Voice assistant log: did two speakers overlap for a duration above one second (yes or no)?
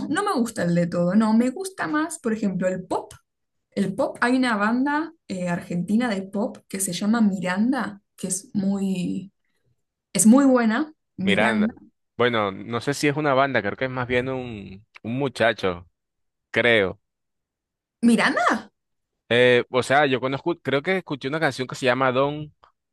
no